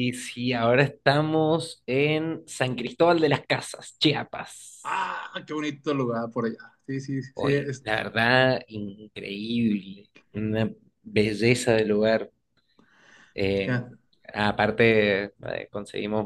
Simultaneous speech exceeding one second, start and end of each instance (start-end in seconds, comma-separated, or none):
none